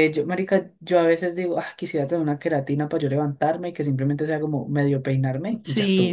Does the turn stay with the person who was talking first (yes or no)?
no